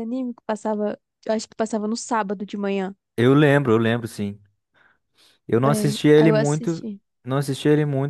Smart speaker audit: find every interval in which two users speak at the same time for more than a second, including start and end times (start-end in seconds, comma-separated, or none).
5.6-6.9